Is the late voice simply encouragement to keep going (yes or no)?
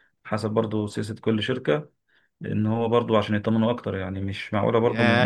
no